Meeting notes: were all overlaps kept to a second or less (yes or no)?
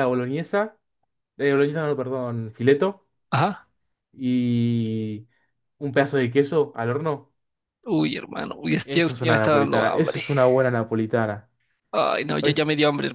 no